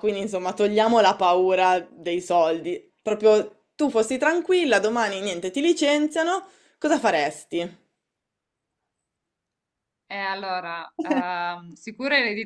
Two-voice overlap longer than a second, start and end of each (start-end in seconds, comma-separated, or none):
none